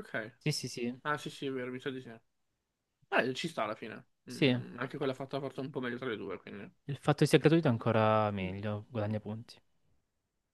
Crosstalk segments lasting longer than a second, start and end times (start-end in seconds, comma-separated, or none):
none